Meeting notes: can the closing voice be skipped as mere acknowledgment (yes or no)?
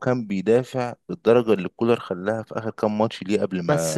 no